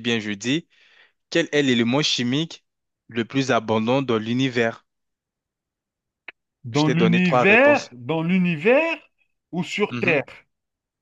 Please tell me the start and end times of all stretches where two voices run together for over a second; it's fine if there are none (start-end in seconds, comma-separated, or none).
6.7-7.9